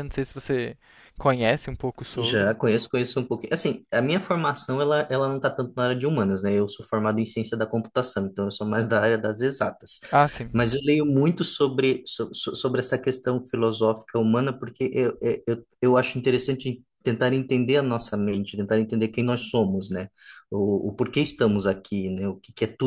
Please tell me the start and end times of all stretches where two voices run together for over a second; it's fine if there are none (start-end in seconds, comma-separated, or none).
none